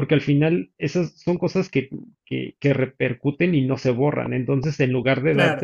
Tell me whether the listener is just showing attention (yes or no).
yes